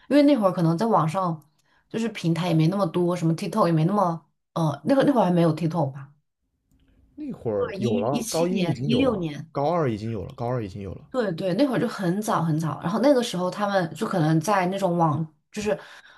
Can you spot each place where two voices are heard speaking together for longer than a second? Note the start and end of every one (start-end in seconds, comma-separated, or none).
7.6-9.5